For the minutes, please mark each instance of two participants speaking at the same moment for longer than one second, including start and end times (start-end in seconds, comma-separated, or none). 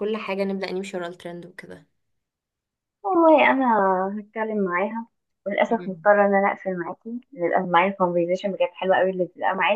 none